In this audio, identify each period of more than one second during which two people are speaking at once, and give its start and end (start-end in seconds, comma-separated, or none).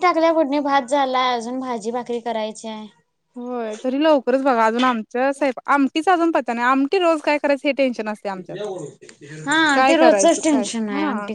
none